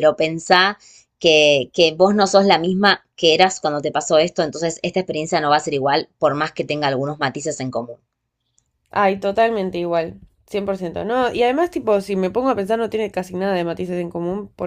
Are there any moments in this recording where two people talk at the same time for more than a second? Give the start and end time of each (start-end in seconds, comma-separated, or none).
none